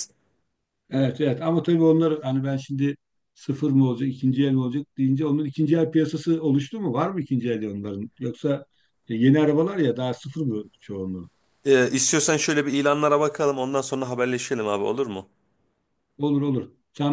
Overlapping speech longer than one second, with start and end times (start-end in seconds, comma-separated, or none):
none